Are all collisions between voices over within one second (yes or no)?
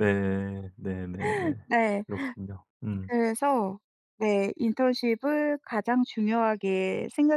yes